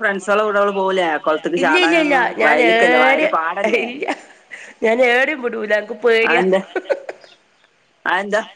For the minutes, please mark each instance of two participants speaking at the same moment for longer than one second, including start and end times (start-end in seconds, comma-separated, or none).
1.6-3.4